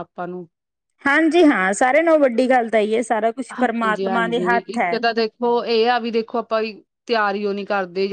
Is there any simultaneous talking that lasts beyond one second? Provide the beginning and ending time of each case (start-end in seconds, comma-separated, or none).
none